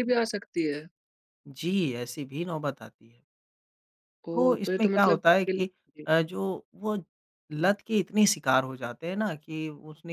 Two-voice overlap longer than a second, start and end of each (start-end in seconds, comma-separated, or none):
4.3-5.6